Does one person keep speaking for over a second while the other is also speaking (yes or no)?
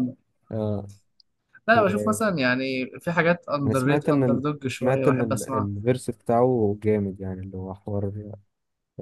yes